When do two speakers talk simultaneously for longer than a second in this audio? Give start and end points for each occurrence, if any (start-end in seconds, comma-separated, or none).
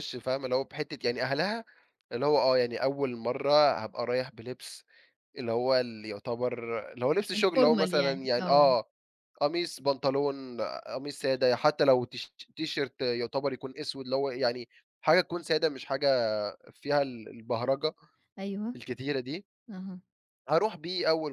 7.3-8.7